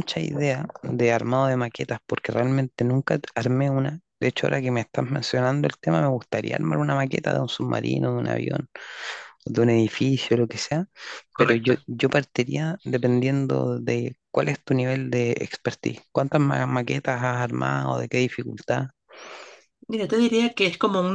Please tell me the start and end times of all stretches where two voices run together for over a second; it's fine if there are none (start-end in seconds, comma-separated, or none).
none